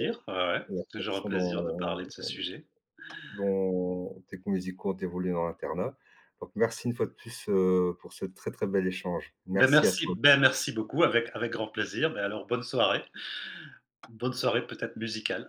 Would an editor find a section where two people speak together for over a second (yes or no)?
yes